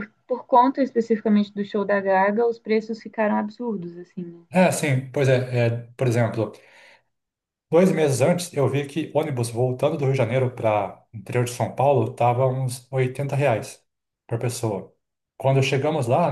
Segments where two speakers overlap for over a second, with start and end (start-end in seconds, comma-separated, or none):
none